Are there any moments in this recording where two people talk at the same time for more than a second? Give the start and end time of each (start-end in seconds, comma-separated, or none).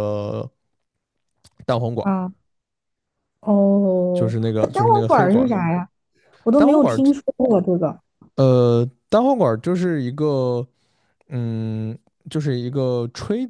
4.1-5.6